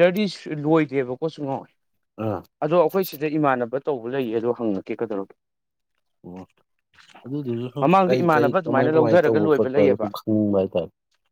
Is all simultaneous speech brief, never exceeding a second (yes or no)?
no